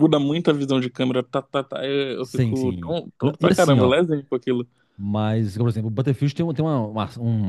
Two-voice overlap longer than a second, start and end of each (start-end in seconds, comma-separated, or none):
2.2-4.0